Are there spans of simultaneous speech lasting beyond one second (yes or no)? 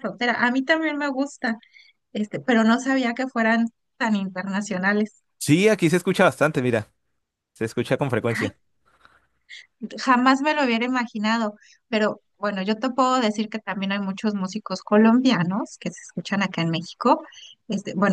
no